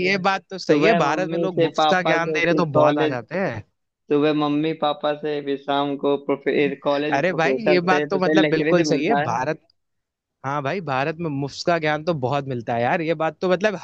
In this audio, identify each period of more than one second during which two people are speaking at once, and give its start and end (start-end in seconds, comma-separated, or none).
0.7-3.2, 7.1-9.4